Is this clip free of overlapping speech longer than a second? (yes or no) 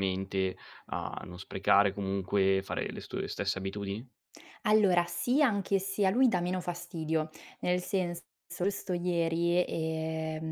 yes